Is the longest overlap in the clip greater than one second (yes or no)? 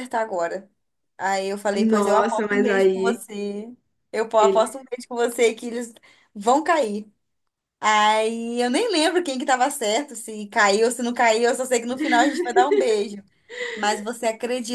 yes